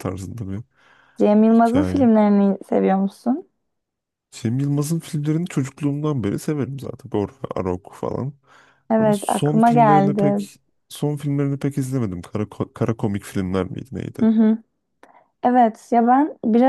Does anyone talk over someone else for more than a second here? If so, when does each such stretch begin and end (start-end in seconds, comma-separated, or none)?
9.0-10.5